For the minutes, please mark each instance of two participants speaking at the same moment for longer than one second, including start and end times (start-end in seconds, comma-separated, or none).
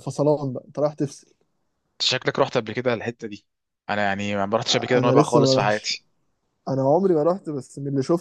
4.7-5.9